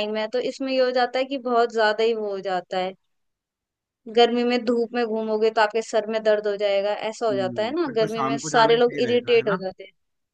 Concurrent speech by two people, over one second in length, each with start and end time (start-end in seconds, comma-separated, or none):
7.3-9.6